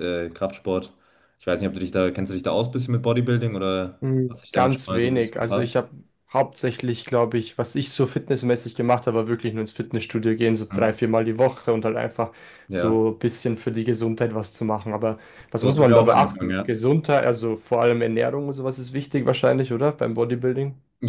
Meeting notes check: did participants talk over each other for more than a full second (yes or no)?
yes